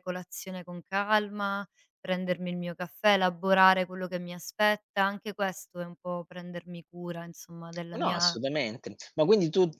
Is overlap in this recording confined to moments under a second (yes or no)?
yes